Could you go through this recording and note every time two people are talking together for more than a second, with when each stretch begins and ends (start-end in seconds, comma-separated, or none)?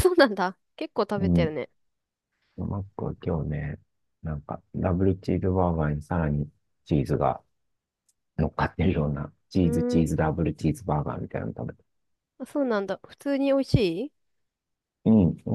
none